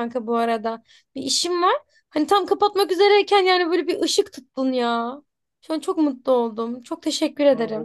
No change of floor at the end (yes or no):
no